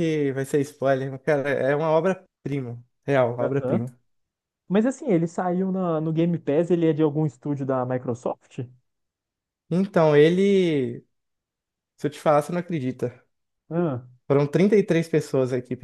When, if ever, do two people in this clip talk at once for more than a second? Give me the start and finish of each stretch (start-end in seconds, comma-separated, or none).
none